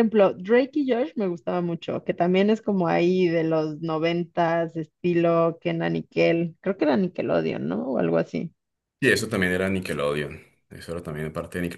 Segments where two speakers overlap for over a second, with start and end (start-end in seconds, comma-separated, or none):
none